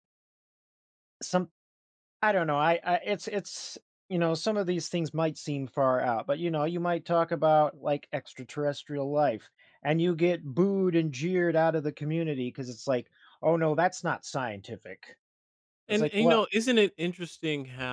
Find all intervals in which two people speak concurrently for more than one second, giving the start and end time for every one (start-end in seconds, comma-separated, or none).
none